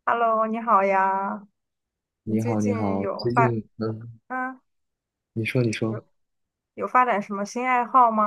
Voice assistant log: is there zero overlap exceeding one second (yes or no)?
no